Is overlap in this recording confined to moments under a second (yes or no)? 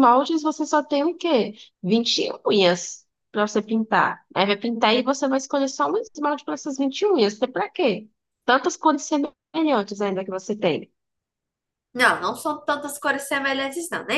yes